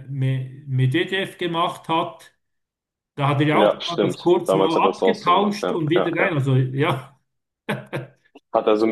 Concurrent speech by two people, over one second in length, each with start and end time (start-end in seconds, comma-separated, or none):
3.5-6.4